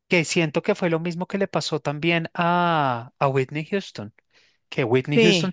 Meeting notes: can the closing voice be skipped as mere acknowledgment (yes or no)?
yes